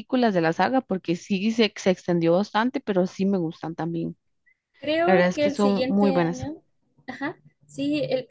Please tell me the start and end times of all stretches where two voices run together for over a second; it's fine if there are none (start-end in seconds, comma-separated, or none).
5.0-6.4